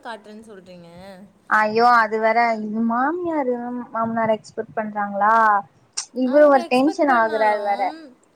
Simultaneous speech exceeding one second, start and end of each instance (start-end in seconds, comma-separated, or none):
6.3-7.8